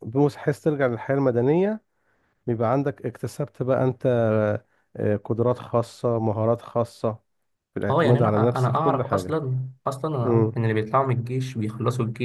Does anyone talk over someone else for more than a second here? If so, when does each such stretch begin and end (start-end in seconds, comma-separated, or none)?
7.9-9.4